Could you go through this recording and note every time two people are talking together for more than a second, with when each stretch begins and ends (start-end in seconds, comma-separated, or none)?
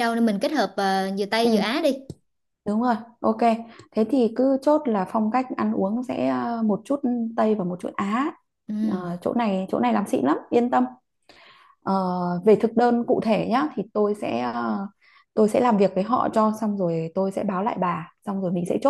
none